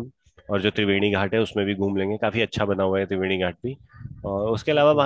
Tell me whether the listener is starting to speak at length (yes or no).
no